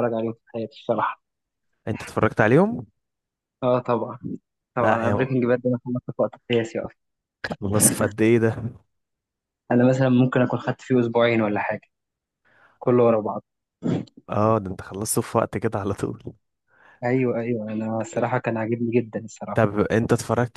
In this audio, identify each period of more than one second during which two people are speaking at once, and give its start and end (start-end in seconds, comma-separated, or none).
none